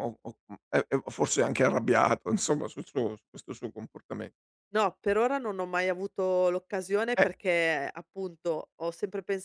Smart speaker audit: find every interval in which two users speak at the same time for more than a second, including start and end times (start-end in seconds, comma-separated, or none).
none